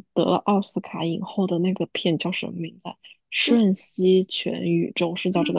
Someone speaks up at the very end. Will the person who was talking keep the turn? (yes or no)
no